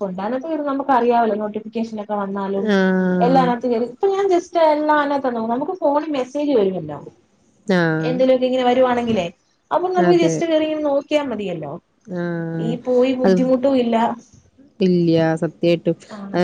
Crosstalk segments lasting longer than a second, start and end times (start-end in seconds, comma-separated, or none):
none